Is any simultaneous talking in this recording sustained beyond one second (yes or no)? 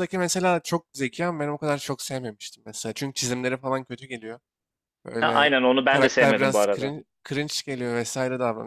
yes